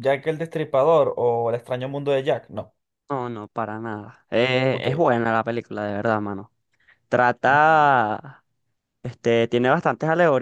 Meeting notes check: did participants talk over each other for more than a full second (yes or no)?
no